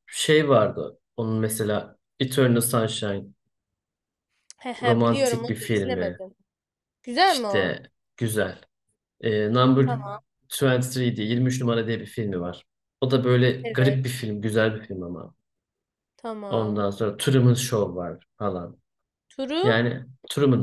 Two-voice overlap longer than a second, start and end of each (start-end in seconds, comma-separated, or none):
4.8-6.2